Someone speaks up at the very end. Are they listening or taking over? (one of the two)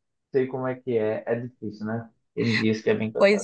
taking over